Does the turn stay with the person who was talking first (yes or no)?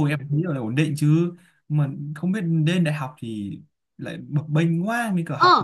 no